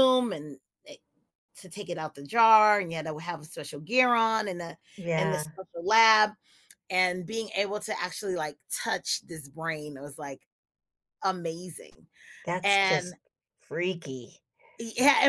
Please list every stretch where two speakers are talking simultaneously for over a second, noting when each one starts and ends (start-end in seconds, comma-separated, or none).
none